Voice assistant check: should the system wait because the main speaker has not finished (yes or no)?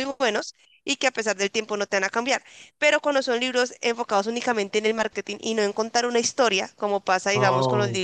yes